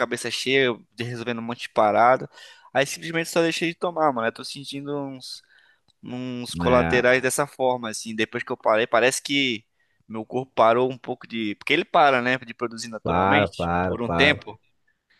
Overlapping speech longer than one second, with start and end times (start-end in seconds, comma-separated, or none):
13.0-14.4